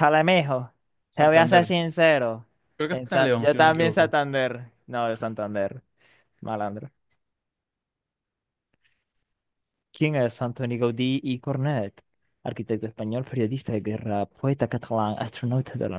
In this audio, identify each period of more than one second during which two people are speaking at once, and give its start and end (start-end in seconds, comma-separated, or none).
2.9-4.1